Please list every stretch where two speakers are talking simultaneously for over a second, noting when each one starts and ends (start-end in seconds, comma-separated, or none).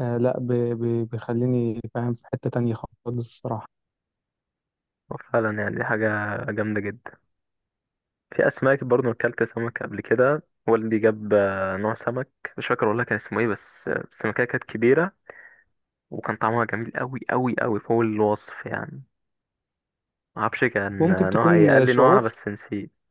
21.0-22.3